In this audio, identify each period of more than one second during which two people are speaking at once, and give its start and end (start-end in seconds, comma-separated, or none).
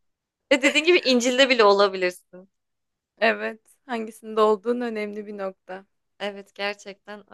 none